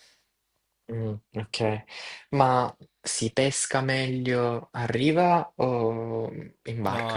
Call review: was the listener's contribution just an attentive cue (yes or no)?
no